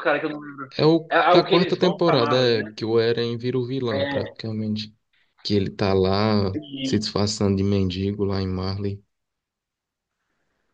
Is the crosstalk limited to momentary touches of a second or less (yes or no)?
no